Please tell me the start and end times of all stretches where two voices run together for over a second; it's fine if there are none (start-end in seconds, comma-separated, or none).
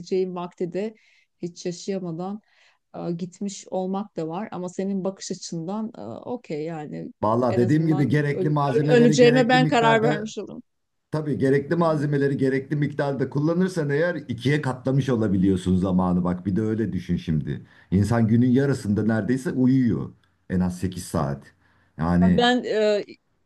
7.5-10.3